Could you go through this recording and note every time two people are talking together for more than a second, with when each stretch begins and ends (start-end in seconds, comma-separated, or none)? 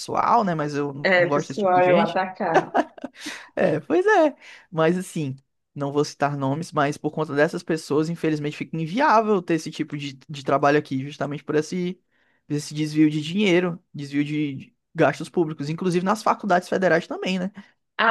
1.0-2.2